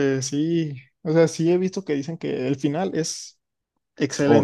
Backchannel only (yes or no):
no